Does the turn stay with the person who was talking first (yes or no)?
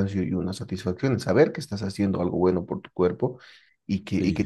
yes